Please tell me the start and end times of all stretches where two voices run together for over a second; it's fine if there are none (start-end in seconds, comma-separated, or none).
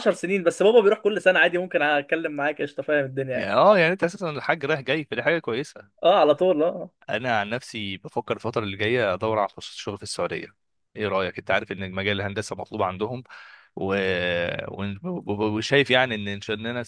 none